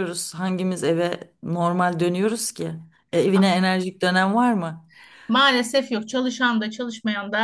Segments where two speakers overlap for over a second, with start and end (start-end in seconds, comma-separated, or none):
none